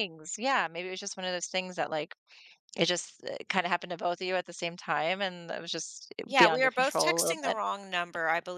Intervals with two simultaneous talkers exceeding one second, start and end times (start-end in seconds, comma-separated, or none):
6.2-7.6